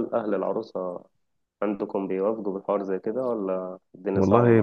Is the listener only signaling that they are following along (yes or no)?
no